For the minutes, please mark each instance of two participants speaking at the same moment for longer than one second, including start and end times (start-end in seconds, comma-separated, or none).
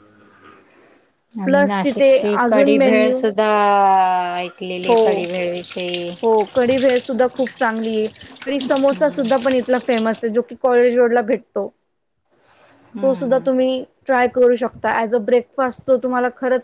1.4-3.2